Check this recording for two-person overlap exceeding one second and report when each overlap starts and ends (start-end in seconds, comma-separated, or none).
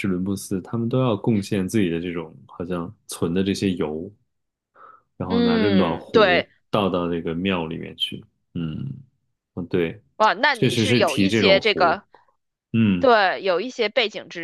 5.3-6.5, 10.5-12.0